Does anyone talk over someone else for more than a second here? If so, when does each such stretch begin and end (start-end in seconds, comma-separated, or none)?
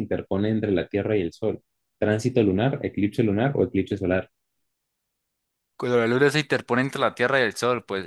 none